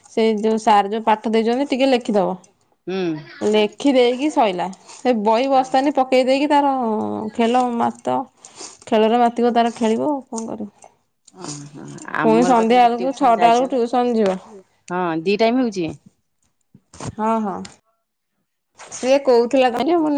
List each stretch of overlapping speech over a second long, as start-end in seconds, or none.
12.2-14.3